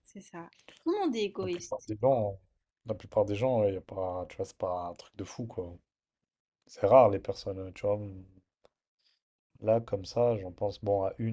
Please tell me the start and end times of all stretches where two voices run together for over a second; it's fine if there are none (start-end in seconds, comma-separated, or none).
none